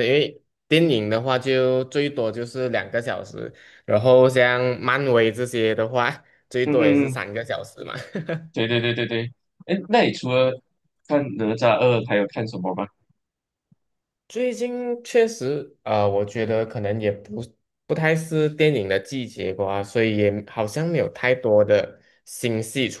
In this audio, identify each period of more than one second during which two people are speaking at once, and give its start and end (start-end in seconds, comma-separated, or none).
none